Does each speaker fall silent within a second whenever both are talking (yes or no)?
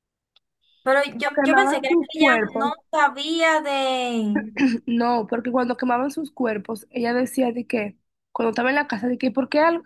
no